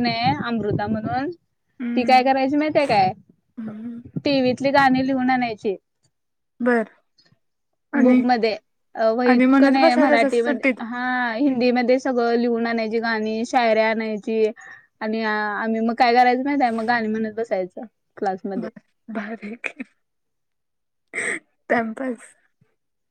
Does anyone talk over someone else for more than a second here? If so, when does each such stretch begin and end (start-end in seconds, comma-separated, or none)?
9.3-10.8